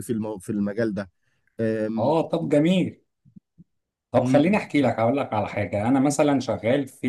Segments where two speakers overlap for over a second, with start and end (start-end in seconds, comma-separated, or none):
none